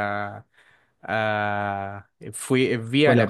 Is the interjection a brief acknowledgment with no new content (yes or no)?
no